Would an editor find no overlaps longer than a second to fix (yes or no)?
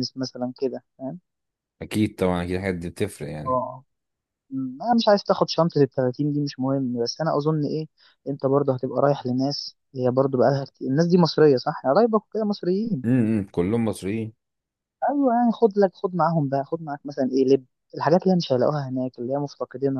yes